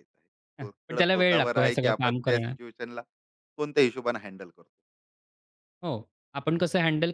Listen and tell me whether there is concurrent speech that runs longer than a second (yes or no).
yes